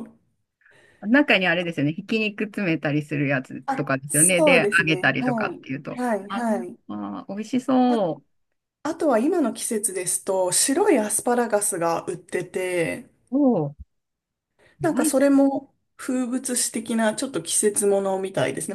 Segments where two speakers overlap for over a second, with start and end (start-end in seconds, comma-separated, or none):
3.6-6.5